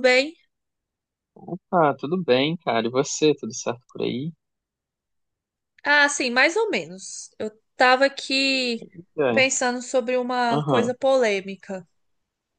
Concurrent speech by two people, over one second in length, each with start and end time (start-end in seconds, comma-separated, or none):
none